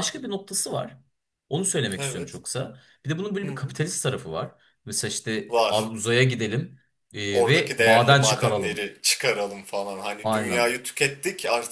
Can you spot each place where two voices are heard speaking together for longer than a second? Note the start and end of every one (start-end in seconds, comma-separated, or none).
7.3-8.9